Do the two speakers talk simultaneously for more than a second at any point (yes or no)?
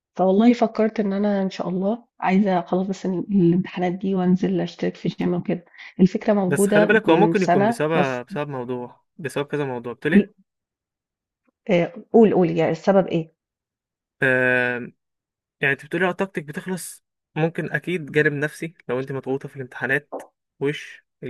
yes